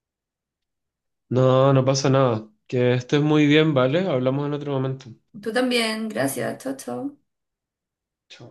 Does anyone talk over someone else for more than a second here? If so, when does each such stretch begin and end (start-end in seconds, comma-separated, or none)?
none